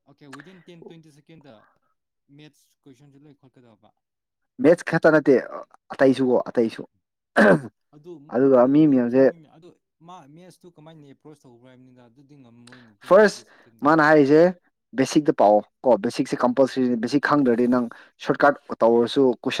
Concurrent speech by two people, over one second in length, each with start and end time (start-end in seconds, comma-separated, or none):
none